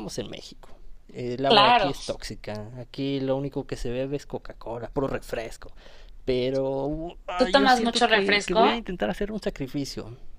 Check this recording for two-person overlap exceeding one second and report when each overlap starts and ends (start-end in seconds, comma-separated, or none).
7.4-8.6